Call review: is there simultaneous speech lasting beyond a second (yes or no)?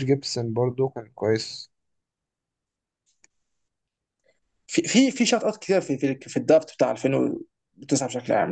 no